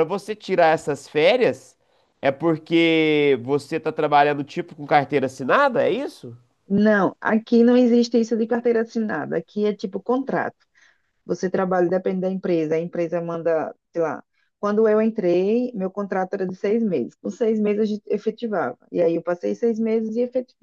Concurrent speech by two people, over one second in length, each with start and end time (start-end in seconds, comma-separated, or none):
none